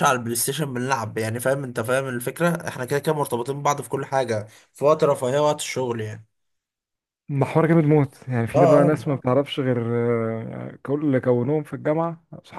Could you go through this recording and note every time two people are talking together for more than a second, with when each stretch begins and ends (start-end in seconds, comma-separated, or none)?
none